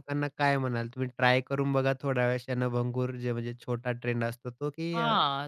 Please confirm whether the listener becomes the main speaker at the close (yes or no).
yes